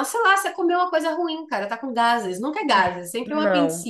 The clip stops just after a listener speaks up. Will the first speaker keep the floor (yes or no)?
no